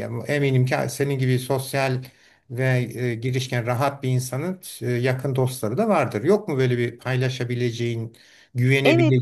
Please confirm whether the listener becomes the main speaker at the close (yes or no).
yes